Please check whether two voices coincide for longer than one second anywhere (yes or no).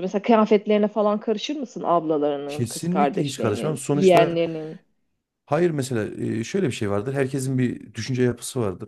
yes